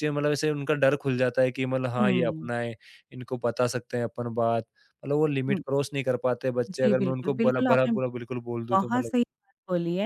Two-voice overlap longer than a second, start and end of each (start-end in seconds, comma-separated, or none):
6.7-7.9